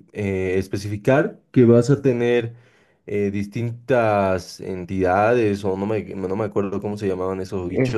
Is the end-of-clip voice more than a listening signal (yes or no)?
no